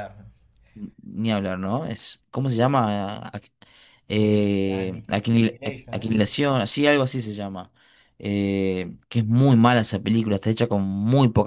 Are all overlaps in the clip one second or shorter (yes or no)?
no